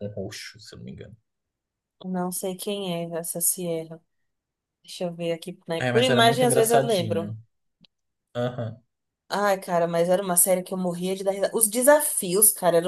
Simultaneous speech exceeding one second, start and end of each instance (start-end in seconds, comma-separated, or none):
5.8-7.3